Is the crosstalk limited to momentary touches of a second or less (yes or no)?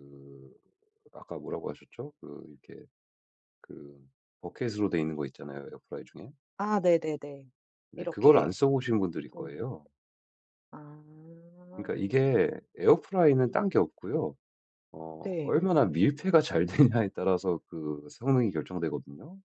yes